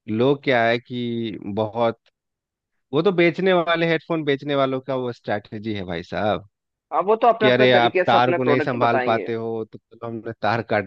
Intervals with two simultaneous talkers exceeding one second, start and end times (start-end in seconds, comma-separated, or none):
7.4-9.3